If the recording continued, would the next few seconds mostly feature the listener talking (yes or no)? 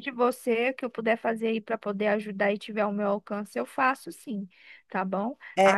no